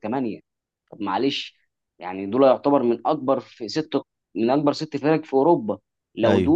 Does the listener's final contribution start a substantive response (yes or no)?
no